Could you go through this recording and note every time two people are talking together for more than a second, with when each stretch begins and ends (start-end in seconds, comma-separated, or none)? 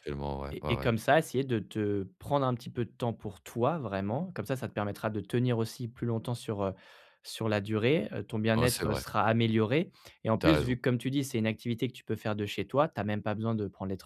none